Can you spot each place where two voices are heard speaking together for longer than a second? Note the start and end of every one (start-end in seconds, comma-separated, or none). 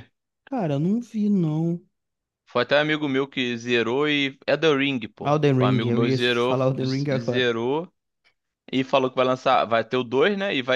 5.2-7.5